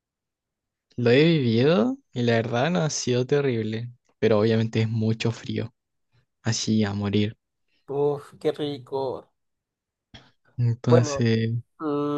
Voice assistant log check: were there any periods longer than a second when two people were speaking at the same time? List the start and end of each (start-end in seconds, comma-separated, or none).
none